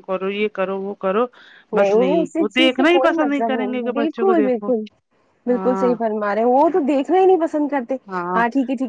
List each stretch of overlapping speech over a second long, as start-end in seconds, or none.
1.8-4.7